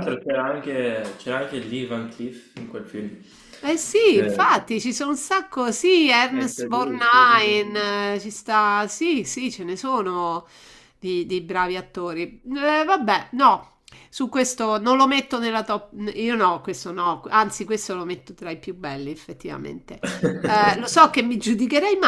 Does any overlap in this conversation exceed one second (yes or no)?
yes